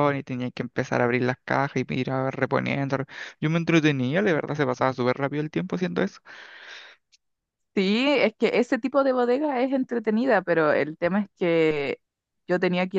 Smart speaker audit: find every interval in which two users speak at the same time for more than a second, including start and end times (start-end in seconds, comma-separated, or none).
none